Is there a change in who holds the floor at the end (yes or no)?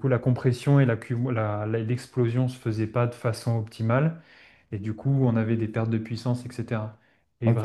no